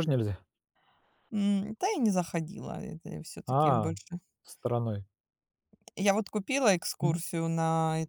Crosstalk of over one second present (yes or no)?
no